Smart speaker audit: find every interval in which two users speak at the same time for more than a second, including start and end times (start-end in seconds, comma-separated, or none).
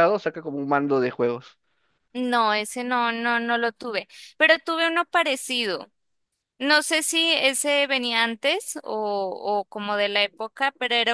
none